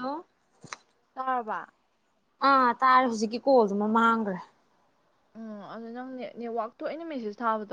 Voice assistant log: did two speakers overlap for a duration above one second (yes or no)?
no